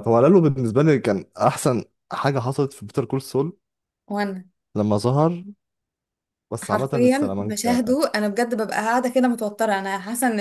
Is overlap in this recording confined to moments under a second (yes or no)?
no